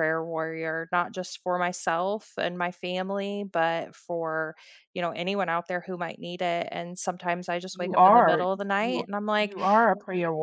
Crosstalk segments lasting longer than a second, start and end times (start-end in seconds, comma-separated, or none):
7.7-9.6